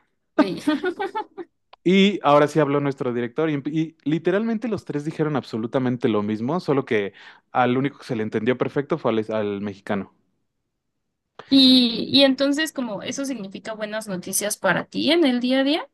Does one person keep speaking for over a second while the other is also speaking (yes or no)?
no